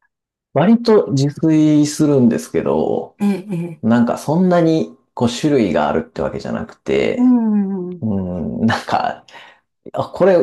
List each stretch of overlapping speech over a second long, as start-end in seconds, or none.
none